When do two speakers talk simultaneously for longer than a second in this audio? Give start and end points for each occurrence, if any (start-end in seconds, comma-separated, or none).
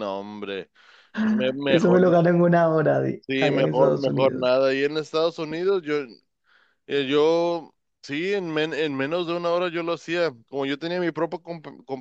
3.3-4.5